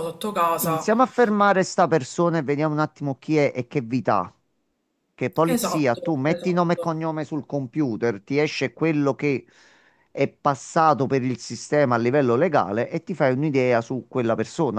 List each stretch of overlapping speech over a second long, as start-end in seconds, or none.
5.5-6.8